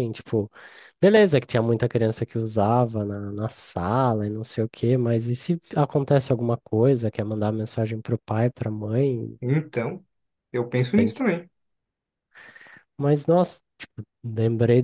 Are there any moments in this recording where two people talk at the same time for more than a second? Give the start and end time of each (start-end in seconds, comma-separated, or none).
none